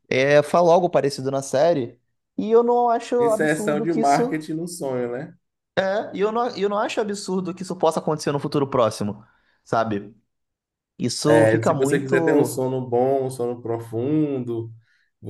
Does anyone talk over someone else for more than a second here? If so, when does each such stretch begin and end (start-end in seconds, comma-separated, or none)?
3.2-4.4, 11.3-12.7